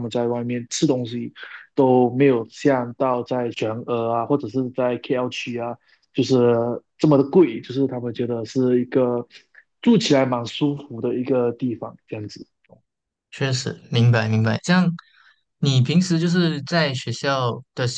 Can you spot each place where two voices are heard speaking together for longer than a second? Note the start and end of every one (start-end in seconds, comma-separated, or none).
none